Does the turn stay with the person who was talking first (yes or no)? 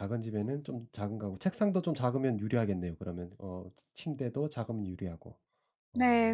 no